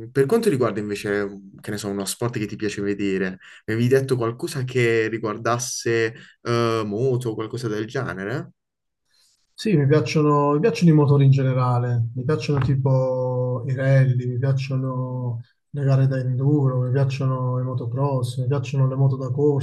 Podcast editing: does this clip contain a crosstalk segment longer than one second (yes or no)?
no